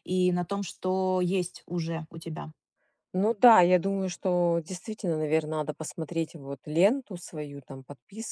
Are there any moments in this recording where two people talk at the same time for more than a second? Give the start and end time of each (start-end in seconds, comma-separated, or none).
none